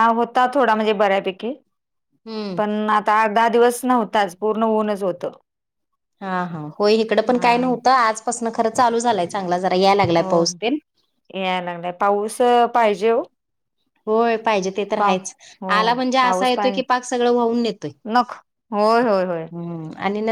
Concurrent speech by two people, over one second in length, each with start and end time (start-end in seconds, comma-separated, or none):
none